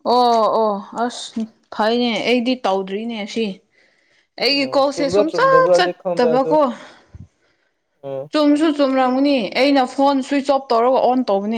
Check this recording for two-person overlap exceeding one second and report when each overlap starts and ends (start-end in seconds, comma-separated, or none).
4.5-6.5